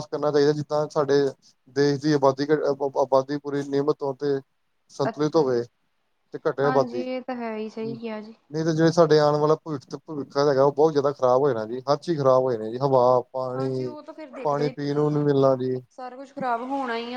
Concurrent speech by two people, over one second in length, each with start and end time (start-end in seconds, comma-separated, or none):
6.7-8.0, 13.6-15.2